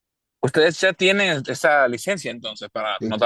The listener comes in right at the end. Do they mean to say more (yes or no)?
yes